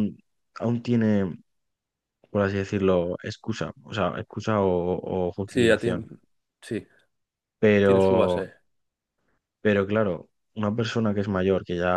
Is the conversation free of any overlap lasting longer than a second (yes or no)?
yes